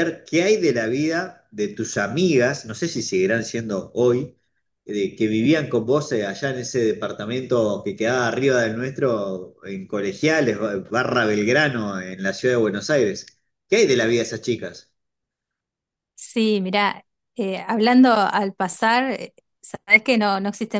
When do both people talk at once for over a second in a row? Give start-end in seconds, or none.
none